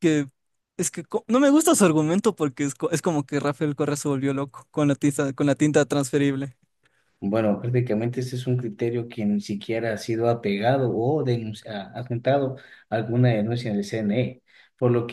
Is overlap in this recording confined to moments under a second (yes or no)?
yes